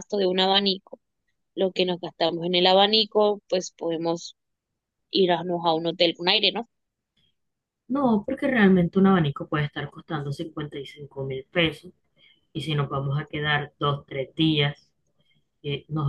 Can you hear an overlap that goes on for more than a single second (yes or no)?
no